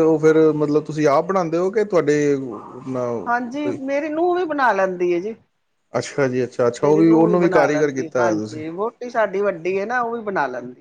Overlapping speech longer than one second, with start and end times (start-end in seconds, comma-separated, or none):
6.8-8.6